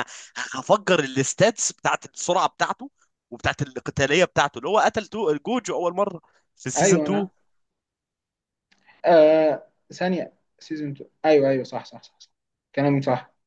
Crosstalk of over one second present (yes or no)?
no